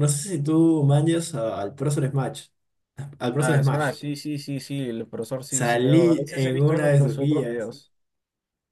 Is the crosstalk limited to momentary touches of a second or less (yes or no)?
no